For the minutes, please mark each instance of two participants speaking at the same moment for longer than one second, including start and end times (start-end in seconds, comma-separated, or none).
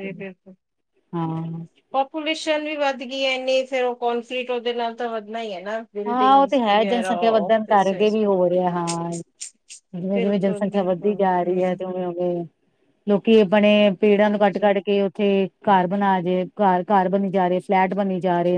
6.1-8.2, 10.1-11.8